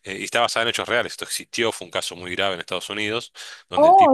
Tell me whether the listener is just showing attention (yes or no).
no